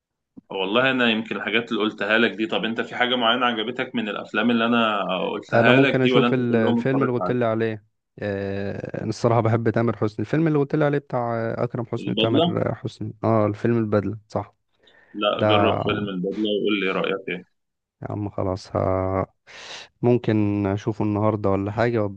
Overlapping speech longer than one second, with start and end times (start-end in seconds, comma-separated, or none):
5.5-7.4